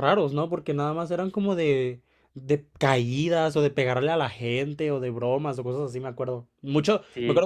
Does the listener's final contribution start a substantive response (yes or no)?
no